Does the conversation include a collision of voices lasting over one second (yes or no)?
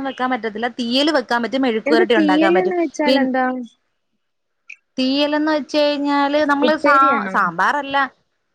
no